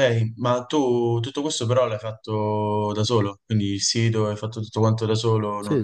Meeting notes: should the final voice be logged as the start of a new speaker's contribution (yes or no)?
yes